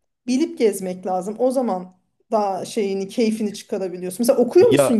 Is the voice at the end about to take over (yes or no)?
yes